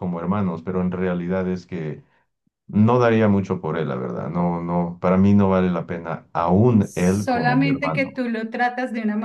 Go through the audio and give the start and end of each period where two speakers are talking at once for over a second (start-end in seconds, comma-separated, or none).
6.8-8.2